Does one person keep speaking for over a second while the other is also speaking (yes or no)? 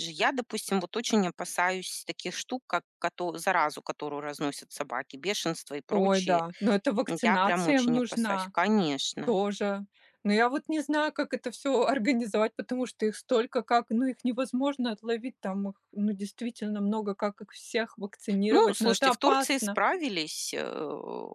yes